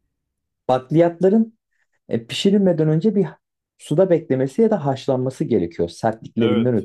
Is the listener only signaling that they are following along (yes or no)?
no